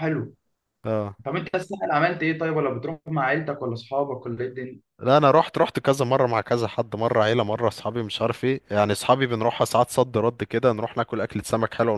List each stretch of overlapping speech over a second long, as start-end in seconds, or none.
none